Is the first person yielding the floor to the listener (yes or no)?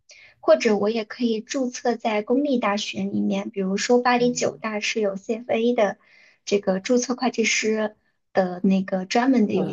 yes